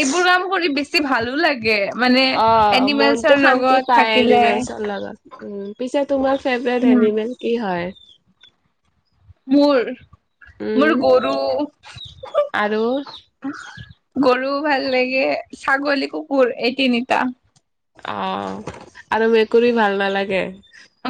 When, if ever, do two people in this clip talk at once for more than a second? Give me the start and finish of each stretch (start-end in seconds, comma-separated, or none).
2.8-4.4